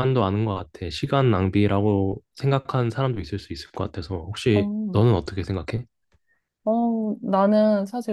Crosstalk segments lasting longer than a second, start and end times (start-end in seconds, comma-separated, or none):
none